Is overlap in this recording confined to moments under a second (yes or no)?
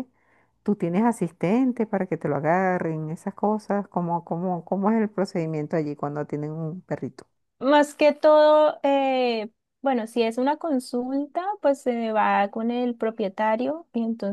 yes